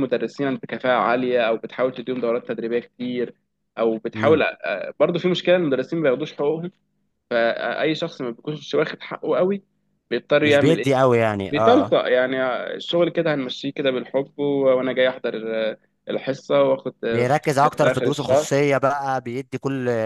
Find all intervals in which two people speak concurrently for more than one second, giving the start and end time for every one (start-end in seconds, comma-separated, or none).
17.1-18.6